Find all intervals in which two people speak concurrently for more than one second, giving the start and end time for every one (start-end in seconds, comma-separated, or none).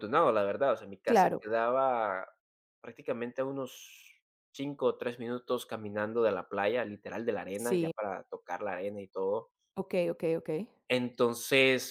none